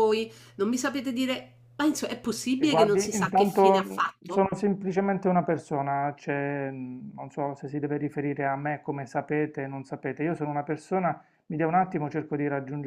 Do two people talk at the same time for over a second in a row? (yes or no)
yes